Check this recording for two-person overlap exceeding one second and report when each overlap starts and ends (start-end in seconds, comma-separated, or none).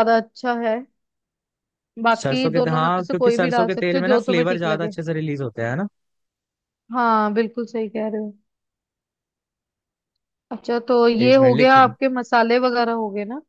2.1-4.9